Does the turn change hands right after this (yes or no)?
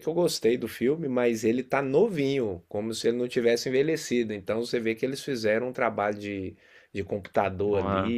no